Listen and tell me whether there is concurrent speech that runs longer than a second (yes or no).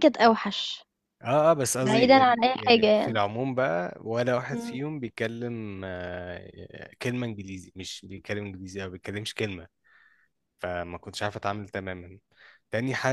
yes